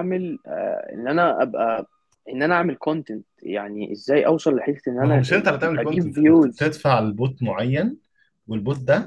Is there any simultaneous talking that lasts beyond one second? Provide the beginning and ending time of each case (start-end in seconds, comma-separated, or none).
5.0-6.8